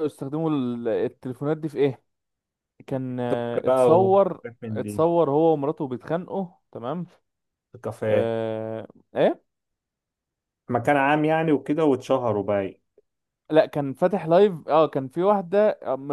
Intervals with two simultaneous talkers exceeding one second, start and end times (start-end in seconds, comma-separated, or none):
3.3-5.0